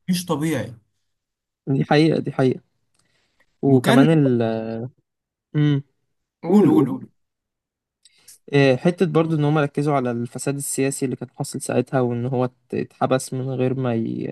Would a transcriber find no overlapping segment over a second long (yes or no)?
yes